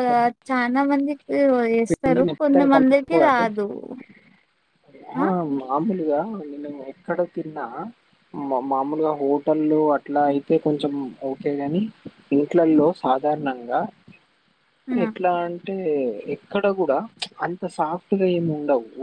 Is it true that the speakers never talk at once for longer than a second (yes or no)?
no